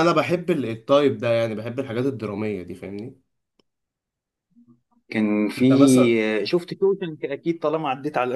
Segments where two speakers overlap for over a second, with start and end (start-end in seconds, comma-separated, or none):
none